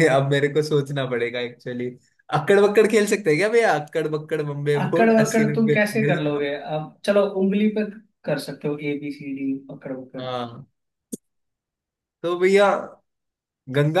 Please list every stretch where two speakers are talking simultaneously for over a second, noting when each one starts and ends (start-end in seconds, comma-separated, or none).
4.8-6.5